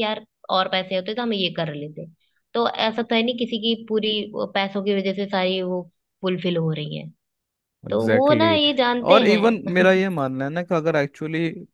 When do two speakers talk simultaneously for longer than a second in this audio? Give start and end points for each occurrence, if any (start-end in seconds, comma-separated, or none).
7.9-10.0